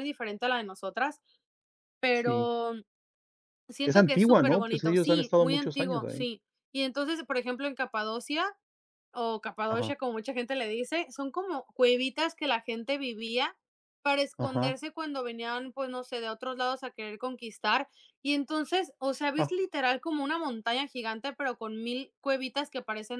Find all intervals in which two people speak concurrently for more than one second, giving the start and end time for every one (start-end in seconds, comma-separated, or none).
3.8-6.3